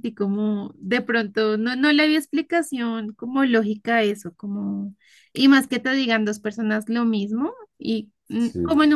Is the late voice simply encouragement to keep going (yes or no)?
yes